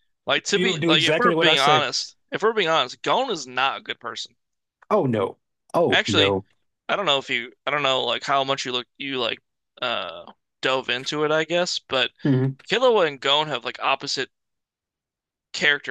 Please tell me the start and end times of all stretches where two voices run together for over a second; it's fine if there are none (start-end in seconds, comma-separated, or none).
0.5-1.9